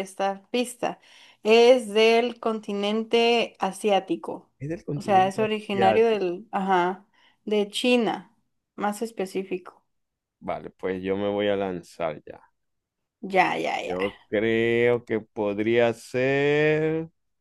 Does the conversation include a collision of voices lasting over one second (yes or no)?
yes